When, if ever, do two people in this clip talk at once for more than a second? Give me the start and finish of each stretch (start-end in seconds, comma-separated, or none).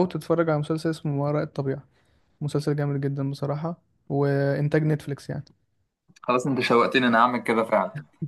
none